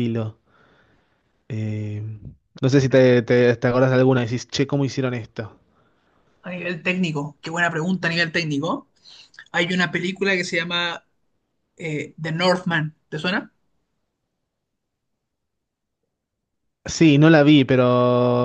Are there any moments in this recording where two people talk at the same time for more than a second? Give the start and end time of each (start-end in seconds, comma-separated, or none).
none